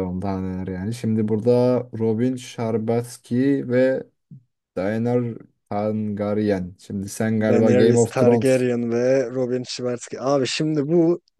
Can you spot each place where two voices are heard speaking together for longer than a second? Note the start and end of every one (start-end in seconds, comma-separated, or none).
7.4-8.7